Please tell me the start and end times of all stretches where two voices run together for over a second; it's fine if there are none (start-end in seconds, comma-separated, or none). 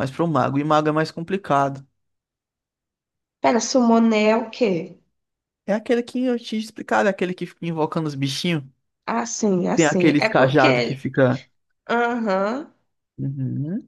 9.7-11.0